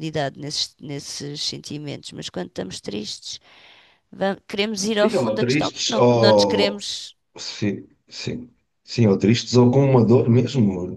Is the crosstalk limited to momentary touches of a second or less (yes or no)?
no